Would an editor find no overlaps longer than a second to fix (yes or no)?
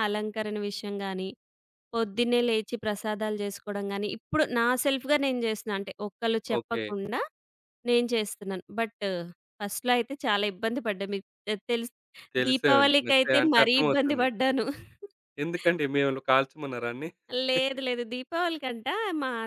no